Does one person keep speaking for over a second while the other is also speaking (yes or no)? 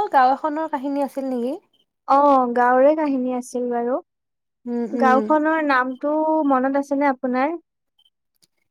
no